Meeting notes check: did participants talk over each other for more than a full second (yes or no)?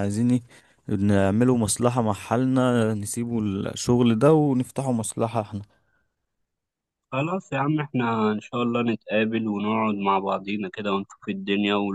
no